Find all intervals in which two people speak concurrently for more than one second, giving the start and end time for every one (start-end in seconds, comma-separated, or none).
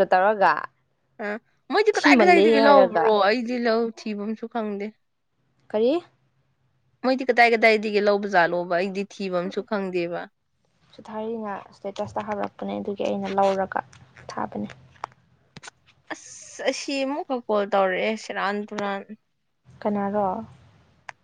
1.9-3.1